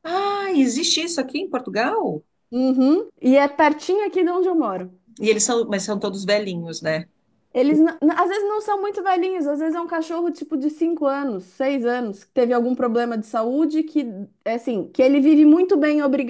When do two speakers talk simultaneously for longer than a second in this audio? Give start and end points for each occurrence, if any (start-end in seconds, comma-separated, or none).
none